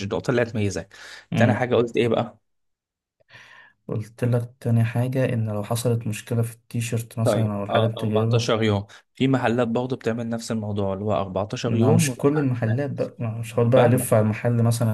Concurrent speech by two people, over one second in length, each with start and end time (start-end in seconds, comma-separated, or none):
7.2-8.5